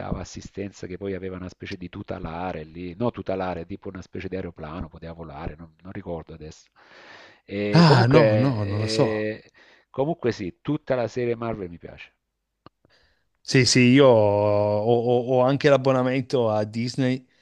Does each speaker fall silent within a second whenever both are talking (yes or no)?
yes